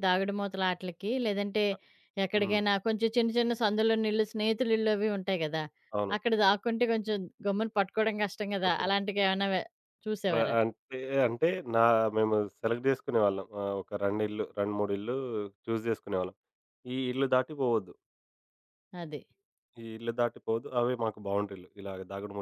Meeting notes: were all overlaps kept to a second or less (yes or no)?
yes